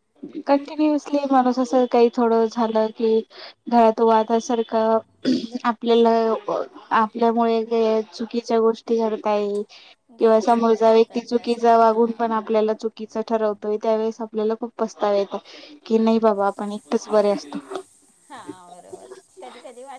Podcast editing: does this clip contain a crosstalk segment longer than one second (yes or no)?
yes